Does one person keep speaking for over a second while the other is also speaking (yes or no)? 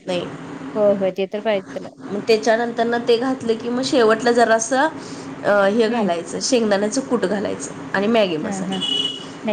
no